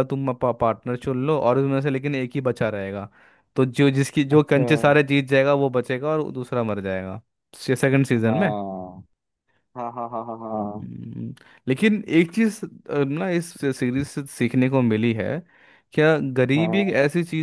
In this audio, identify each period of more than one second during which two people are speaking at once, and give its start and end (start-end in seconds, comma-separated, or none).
none